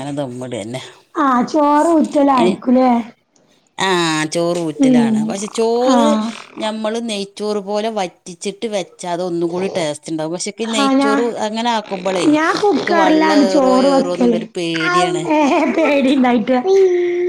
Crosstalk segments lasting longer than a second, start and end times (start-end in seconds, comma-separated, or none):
12.3-13.9